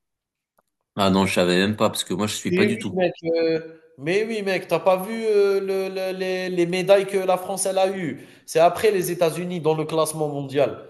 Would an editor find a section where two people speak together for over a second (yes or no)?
no